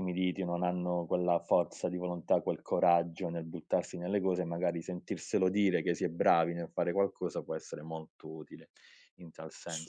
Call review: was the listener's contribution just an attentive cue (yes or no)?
no